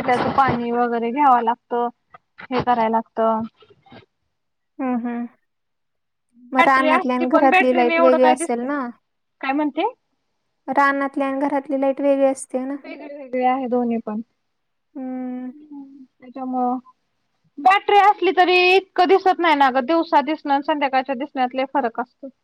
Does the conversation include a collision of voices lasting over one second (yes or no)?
yes